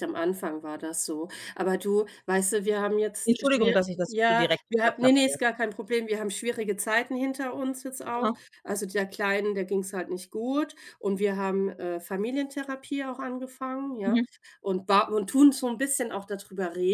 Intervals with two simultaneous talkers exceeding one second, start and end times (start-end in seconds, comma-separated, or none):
3.2-5.4